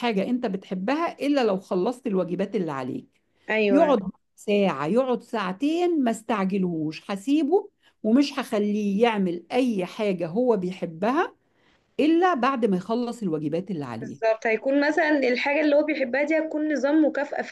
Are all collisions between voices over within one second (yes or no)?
yes